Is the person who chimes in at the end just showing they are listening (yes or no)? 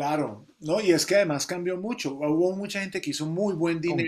yes